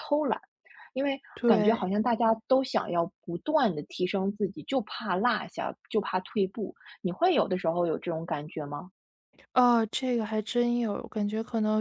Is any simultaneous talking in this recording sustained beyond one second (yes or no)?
no